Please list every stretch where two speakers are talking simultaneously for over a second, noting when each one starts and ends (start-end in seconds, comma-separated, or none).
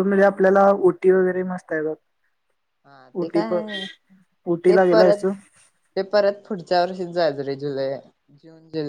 none